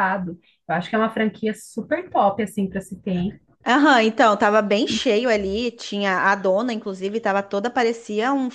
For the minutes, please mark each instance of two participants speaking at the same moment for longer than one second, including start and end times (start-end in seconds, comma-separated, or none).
none